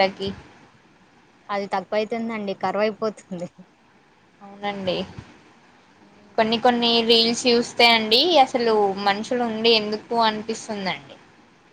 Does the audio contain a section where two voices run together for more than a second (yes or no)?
no